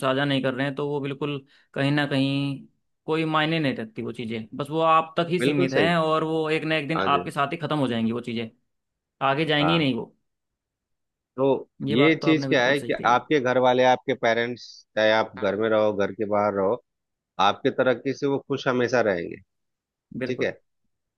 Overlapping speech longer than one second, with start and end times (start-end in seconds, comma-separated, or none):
11.9-13.2